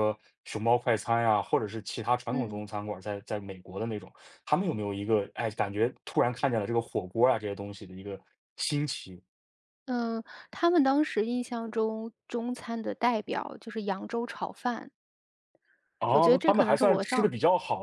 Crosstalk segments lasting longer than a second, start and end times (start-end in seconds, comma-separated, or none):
16.1-17.3